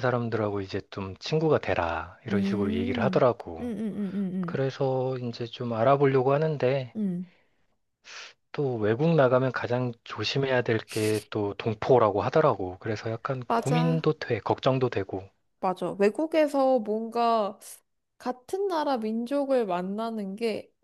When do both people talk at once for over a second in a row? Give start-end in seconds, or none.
2.3-3.7